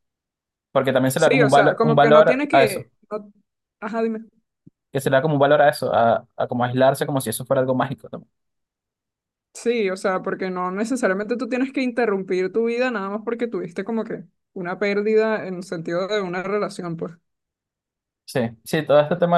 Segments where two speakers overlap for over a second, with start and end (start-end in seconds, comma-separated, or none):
1.1-2.9